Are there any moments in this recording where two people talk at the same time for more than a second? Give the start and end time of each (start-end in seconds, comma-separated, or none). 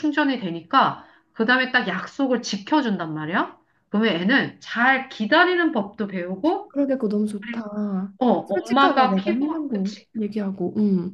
8.5-10.1